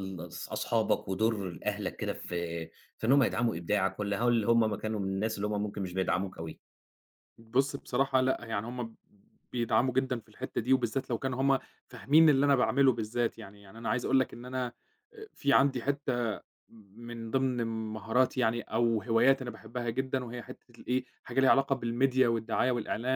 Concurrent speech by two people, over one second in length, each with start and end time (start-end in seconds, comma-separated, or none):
none